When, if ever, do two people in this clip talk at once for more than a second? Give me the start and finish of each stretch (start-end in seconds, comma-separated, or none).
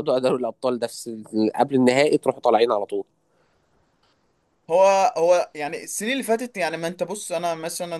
none